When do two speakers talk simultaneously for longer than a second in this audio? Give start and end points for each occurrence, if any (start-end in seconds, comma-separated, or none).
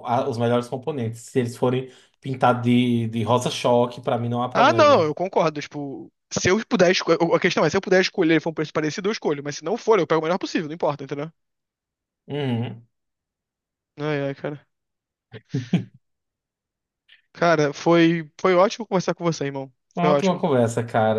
none